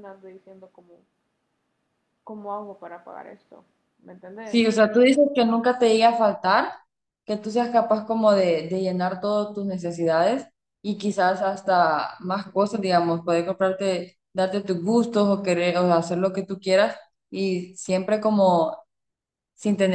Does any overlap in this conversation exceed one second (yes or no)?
no